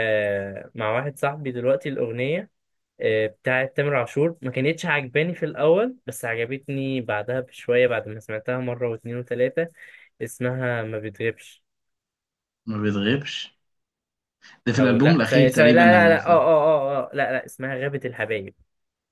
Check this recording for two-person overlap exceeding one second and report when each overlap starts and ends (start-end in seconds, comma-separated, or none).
14.8-16.5